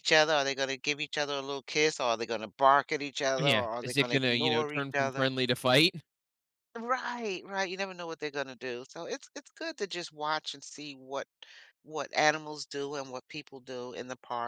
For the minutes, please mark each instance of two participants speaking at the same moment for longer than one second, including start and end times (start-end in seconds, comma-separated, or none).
3.4-5.3